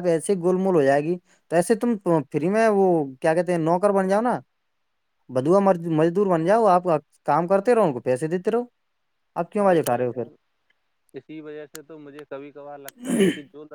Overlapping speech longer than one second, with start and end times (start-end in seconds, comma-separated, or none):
none